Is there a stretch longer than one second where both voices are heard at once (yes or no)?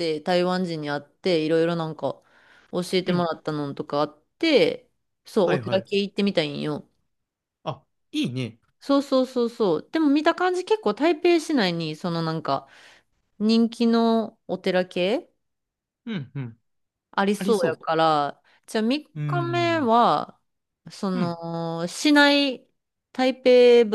no